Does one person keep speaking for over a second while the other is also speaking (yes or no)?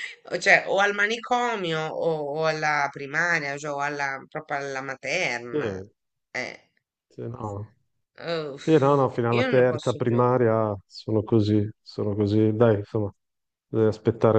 yes